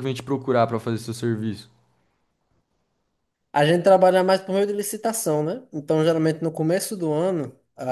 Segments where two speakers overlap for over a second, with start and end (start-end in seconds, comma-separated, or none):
none